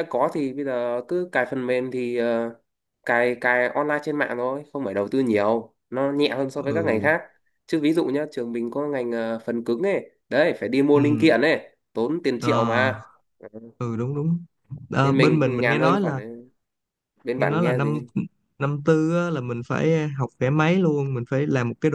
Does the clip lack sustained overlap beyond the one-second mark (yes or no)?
no